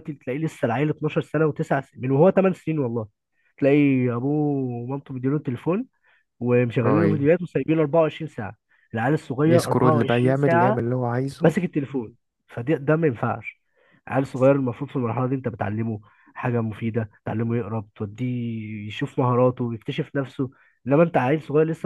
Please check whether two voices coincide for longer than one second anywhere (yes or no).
yes